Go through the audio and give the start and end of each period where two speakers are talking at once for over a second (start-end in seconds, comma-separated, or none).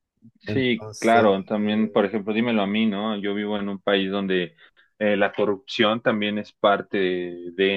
0.5-2.2